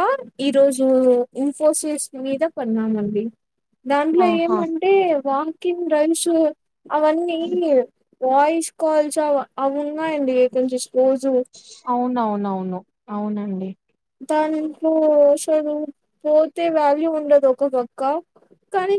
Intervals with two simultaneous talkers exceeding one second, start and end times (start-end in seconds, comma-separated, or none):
none